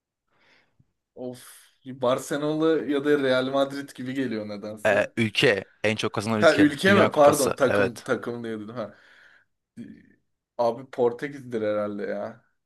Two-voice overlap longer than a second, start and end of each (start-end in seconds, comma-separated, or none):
6.4-8.1